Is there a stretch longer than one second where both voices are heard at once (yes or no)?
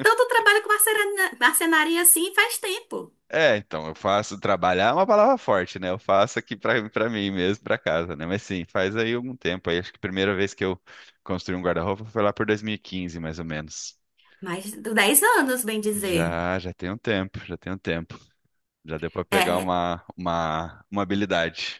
no